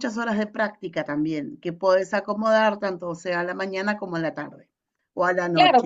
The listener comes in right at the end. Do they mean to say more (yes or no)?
yes